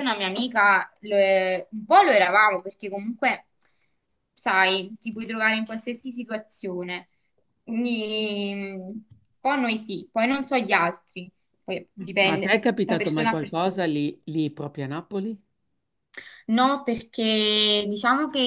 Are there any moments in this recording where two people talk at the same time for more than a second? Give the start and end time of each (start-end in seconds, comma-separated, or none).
12.2-13.8